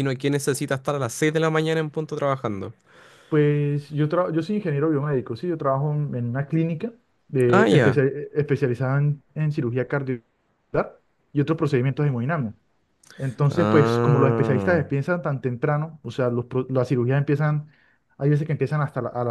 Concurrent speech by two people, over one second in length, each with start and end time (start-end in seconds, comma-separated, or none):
13.5-14.8